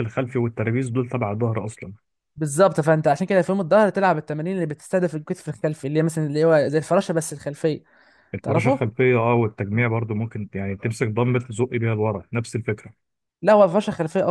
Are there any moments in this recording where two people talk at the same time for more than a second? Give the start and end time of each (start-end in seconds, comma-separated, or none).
none